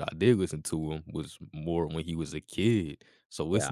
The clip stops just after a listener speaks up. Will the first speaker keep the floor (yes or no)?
yes